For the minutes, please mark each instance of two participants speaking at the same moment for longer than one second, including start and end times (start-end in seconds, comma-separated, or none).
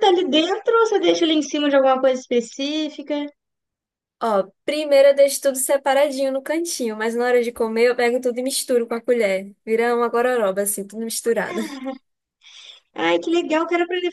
none